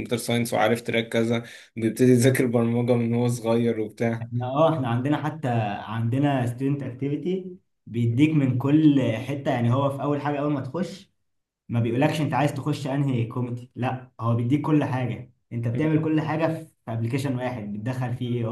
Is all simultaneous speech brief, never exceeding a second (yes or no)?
yes